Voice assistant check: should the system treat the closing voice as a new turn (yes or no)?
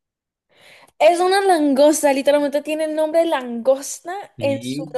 yes